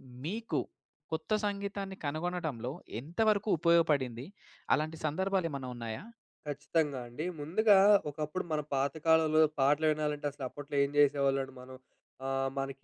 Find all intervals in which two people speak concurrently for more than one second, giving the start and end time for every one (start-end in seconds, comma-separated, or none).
none